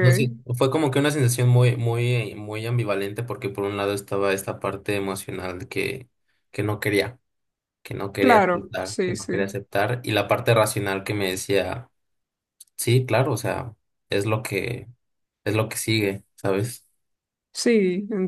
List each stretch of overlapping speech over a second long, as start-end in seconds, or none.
8.2-9.6